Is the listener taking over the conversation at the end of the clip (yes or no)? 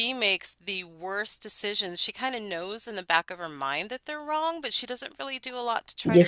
yes